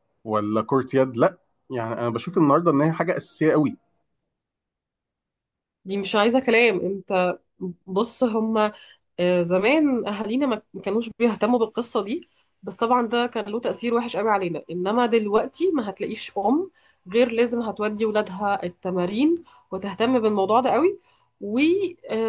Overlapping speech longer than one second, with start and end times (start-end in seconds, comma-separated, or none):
none